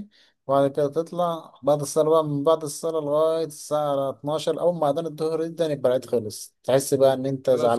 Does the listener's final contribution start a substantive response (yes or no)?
no